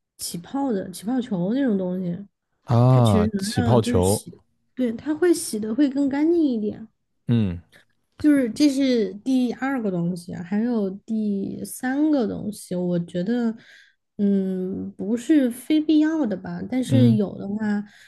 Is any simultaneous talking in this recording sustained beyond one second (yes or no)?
yes